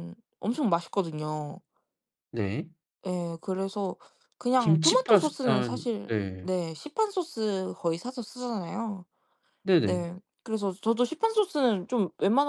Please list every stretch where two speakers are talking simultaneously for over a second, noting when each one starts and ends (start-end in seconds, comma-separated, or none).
4.6-6.5